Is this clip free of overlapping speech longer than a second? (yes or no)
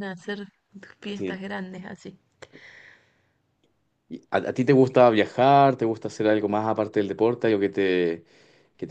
yes